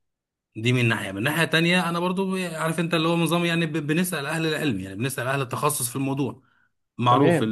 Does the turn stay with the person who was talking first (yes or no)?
no